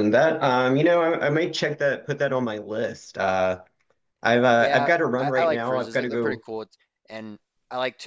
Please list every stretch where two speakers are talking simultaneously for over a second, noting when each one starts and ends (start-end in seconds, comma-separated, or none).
4.6-6.4